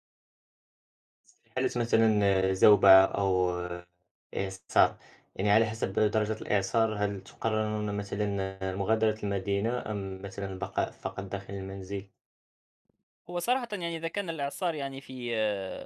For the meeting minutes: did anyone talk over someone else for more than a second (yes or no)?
no